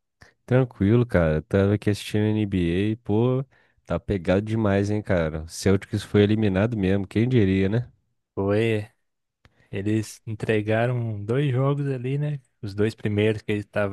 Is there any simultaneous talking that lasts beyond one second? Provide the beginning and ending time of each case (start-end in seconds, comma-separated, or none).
none